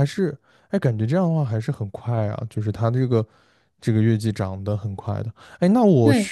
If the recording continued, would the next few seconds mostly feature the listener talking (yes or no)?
no